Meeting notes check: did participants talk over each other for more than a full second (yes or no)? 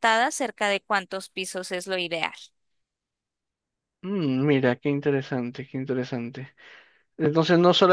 no